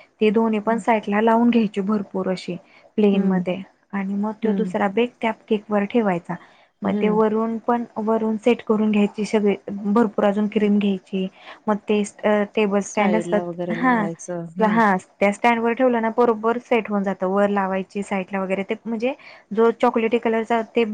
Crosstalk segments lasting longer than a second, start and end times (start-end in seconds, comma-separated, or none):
12.9-14.8